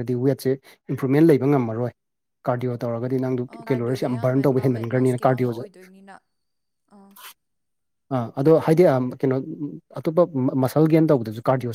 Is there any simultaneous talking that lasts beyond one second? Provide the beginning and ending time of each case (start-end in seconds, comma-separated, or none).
3.5-5.6